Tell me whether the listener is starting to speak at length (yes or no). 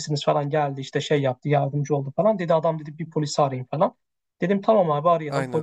no